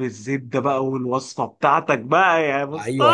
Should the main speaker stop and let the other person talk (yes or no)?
yes